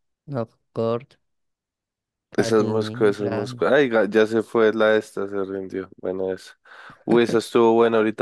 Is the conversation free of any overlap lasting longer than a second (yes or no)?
no